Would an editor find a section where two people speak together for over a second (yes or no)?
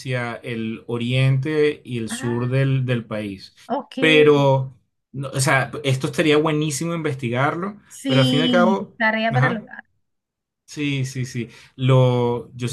yes